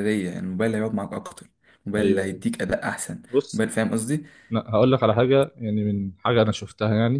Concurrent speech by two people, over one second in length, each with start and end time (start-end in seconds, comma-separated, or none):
none